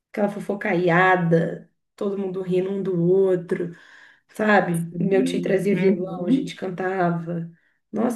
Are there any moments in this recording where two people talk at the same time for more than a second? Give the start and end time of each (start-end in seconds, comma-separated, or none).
4.9-6.6